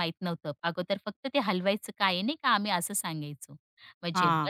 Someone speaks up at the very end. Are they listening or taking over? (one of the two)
listening